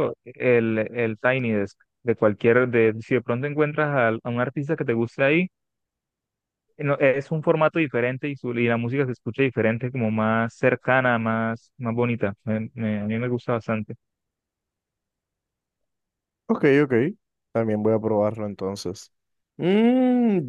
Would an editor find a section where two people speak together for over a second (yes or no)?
no